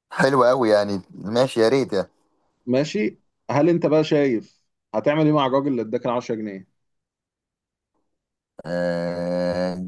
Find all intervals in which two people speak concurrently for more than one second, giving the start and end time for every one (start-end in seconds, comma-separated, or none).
none